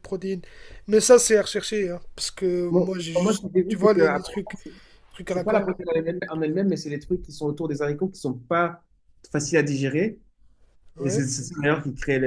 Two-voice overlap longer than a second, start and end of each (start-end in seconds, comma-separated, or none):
2.7-4.6